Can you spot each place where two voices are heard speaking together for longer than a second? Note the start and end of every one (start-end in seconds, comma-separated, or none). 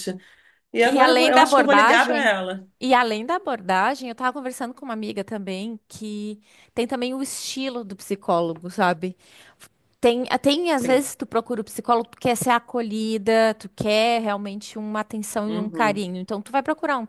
0.8-2.3